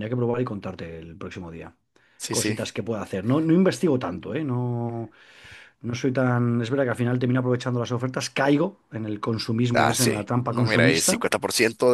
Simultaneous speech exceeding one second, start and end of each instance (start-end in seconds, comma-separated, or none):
9.7-11.2